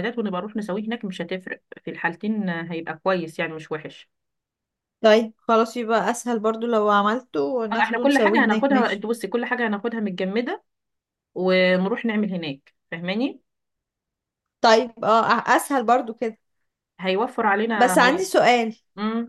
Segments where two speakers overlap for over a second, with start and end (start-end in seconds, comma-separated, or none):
7.7-9.0